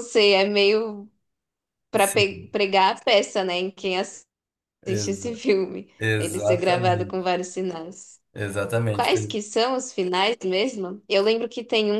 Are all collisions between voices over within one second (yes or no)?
no